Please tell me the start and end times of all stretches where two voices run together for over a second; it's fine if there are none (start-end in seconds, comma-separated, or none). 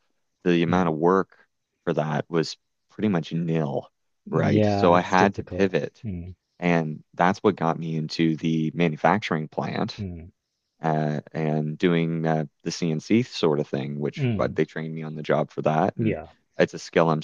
4.3-6.0